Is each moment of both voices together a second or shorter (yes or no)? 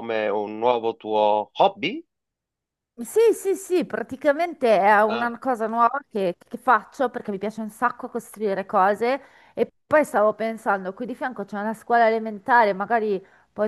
yes